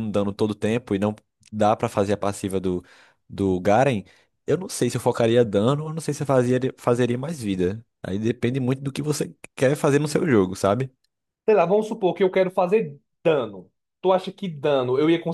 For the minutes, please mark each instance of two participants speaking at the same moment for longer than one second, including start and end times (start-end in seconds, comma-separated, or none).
none